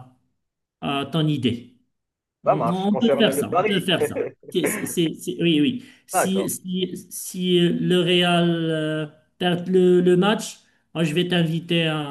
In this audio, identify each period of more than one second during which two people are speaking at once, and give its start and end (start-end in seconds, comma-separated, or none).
2.5-3.8